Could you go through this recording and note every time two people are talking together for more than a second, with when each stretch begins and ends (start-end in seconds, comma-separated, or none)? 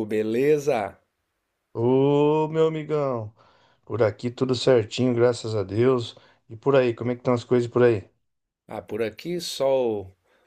none